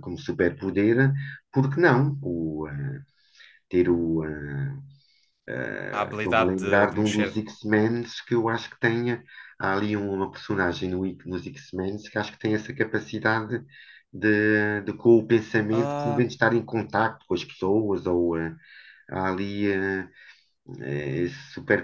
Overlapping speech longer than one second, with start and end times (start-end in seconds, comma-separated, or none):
6.2-7.5